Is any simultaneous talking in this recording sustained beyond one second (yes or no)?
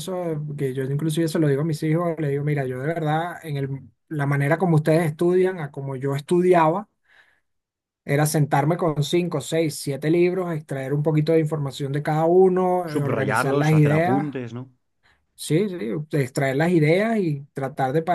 yes